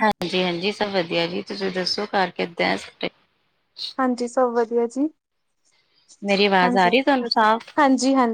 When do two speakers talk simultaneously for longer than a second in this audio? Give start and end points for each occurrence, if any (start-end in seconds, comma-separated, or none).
none